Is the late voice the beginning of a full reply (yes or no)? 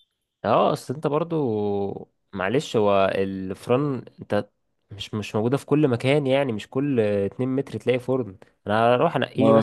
no